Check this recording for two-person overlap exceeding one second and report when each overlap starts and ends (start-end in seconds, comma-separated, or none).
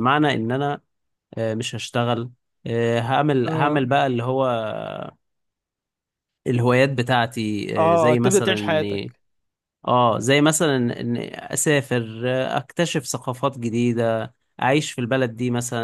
7.8-9.1